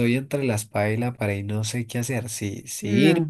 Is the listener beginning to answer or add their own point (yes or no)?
no